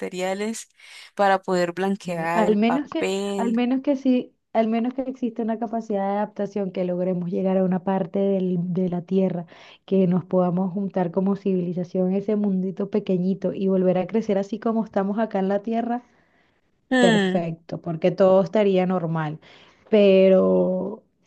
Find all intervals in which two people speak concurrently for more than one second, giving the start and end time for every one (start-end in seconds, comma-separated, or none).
2.0-3.6